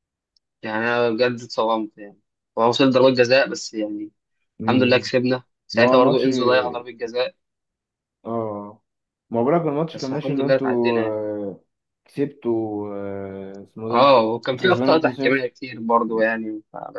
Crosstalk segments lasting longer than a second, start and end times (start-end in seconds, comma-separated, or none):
9.9-11.2, 13.9-15.5